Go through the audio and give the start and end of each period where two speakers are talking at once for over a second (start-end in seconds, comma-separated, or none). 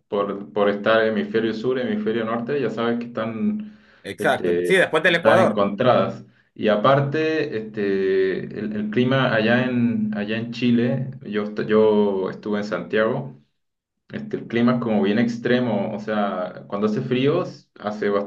4.2-5.7